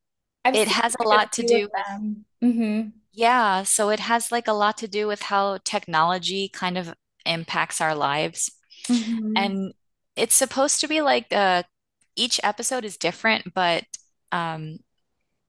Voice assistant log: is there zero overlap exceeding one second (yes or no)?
no